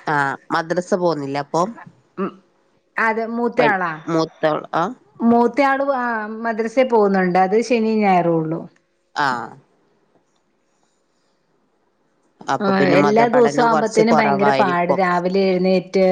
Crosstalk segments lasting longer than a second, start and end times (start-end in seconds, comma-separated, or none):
12.7-15.0